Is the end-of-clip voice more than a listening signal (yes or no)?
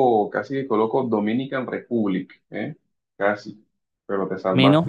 yes